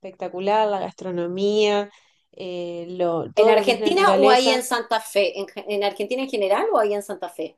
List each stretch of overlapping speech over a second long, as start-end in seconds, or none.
3.4-4.6